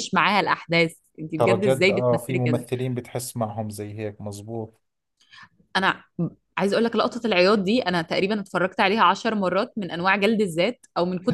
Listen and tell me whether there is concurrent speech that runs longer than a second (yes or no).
yes